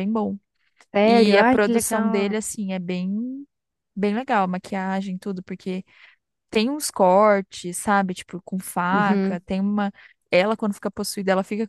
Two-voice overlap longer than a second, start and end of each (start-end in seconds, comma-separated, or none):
1.0-2.4